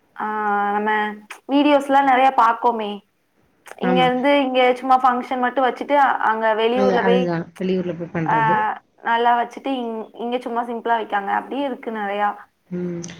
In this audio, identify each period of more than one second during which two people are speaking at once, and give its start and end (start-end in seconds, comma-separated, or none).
none